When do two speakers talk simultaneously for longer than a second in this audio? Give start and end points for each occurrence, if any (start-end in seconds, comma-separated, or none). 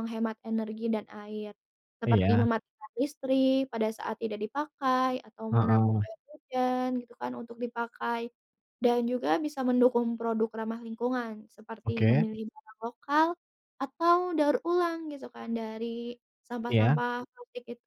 none